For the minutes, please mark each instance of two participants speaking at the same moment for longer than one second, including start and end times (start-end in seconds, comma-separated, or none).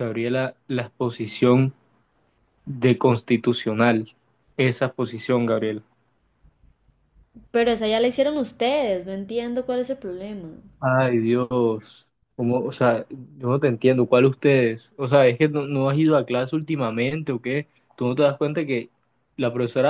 none